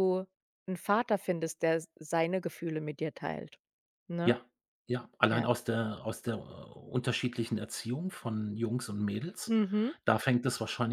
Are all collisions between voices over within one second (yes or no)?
yes